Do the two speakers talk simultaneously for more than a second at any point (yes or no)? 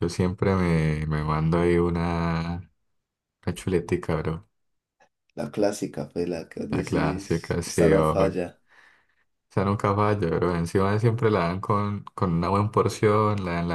yes